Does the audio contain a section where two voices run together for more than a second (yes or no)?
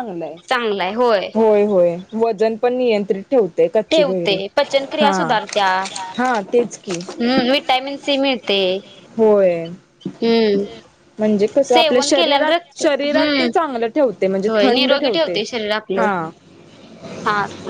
yes